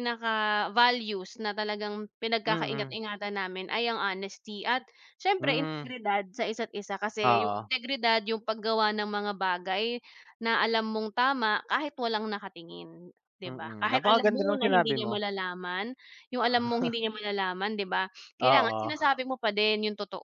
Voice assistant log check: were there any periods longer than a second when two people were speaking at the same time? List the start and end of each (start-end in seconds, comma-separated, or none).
13.5-15.1